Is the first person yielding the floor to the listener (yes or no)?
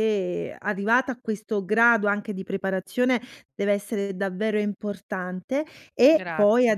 no